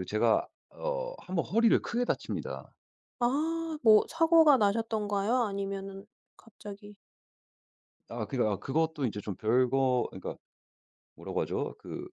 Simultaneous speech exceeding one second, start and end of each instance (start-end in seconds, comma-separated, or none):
none